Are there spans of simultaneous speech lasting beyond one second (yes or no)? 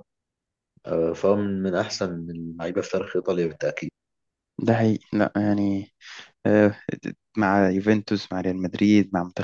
no